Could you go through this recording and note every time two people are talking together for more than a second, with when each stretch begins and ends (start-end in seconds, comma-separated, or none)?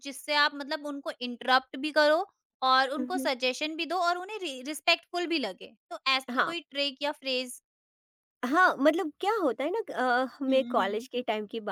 none